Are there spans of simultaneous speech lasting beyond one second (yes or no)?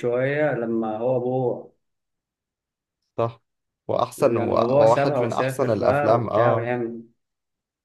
yes